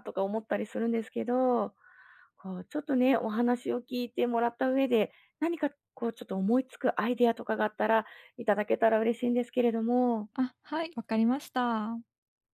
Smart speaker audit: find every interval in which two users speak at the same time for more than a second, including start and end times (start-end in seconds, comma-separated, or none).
none